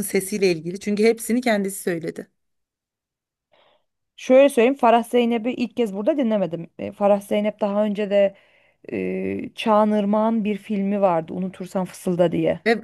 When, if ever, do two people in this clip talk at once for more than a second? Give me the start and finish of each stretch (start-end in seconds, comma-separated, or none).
none